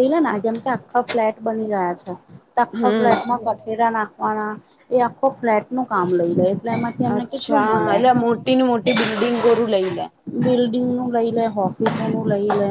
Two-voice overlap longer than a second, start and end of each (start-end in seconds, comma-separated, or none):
none